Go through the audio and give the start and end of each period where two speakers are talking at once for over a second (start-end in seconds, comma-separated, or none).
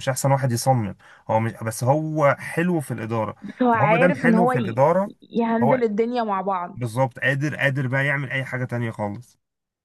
3.4-4.8